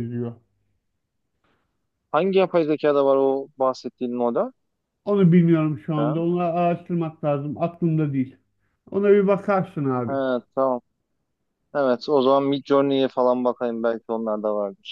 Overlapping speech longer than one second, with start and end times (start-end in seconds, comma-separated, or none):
none